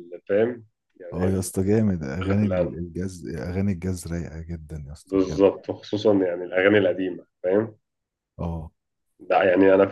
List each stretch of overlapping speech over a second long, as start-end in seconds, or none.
none